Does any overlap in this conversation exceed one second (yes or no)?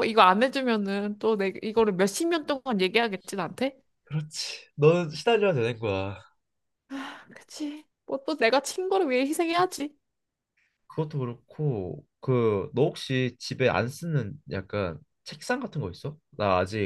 no